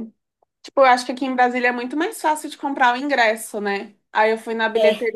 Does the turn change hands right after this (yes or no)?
no